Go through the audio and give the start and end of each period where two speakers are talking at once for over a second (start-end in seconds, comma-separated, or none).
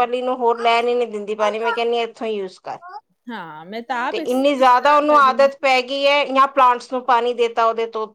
4.1-5.5